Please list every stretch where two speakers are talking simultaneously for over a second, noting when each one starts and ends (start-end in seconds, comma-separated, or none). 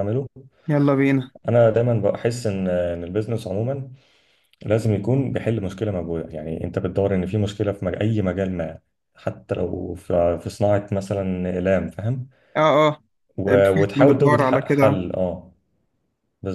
13.4-15.0